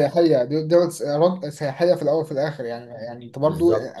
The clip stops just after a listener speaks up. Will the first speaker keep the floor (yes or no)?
yes